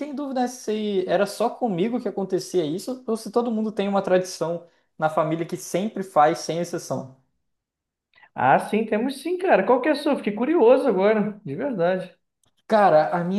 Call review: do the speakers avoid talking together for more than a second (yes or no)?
yes